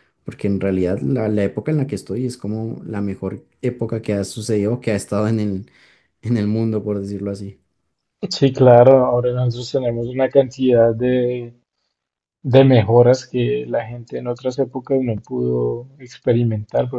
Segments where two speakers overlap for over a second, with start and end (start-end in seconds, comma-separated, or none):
none